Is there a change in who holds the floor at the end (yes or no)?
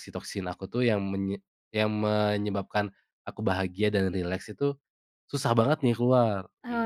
yes